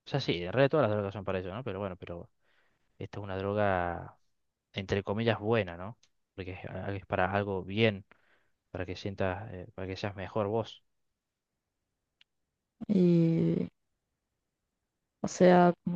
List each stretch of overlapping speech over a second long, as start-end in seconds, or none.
none